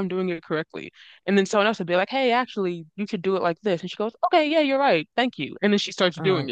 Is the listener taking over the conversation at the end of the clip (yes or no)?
yes